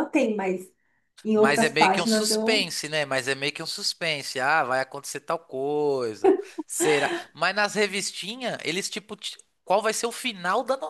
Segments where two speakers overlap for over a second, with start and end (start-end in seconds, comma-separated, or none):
1.3-2.7